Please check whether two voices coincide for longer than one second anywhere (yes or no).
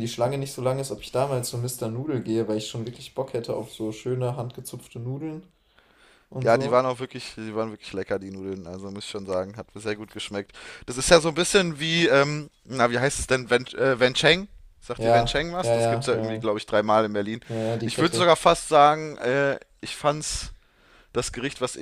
yes